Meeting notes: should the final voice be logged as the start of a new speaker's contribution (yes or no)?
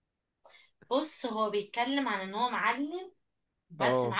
no